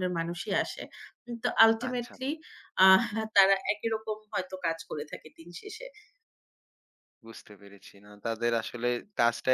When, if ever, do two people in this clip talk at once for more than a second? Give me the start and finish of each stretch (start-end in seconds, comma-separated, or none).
none